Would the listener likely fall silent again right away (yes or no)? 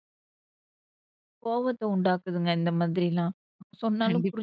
no